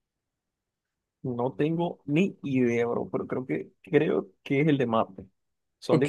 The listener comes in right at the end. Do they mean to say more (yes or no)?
yes